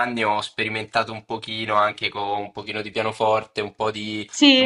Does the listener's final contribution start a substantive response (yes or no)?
no